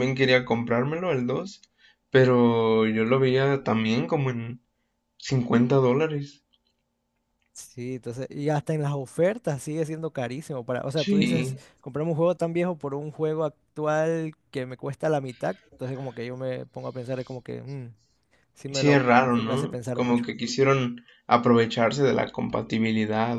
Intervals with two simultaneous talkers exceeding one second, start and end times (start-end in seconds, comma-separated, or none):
18.7-20.3